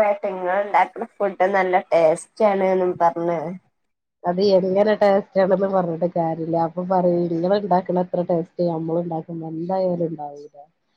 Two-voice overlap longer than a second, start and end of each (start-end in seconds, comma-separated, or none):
none